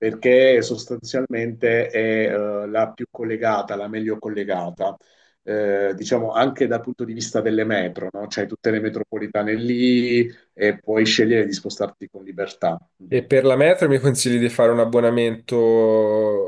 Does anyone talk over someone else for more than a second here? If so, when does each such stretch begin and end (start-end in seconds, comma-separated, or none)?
none